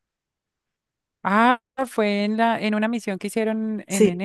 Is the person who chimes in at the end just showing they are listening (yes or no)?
no